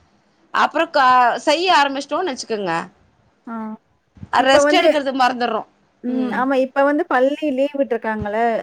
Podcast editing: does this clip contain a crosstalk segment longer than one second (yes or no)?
no